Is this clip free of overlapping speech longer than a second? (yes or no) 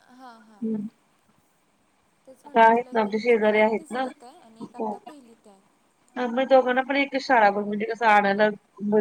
no